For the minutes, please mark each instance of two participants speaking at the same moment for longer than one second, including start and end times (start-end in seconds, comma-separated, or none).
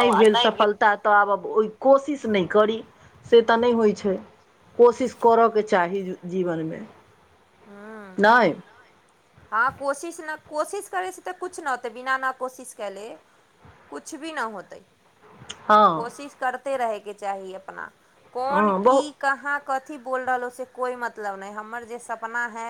none